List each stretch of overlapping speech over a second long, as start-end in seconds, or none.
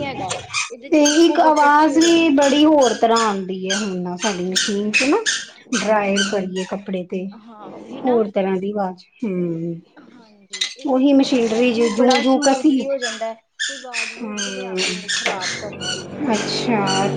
0.9-2.6, 10.9-12.9